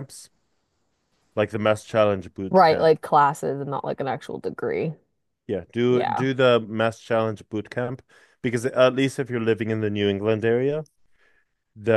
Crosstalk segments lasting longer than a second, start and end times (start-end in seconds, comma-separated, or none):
none